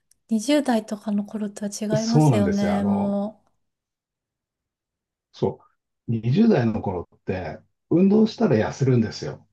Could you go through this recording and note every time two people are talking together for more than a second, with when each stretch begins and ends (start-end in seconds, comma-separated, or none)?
1.9-3.2